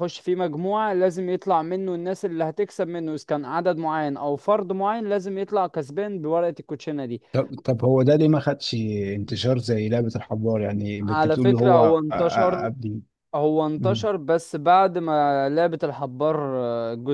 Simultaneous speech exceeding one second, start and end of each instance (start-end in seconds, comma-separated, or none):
11.0-12.7